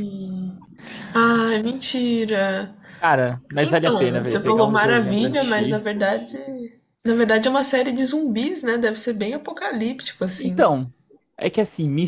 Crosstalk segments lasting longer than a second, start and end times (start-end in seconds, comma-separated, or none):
3.6-5.9